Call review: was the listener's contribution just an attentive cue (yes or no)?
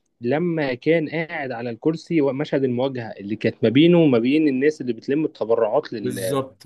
no